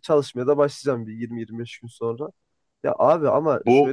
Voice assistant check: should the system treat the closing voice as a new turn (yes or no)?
no